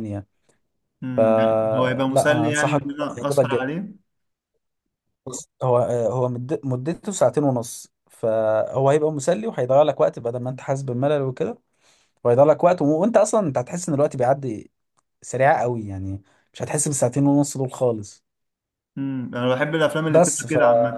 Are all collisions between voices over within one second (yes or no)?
no